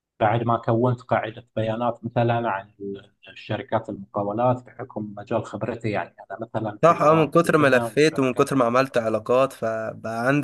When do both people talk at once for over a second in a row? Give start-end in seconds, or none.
6.8-9.0